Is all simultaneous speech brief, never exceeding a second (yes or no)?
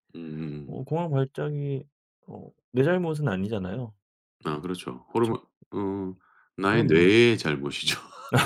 yes